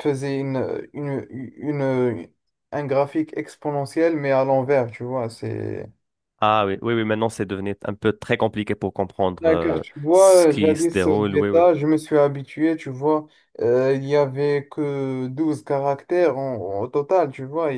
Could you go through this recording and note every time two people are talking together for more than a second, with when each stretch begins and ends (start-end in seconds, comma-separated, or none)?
9.4-11.6